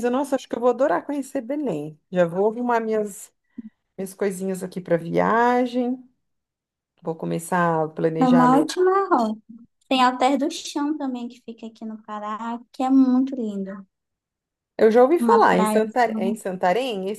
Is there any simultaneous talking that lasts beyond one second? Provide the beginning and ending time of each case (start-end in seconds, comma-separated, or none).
15.2-16.4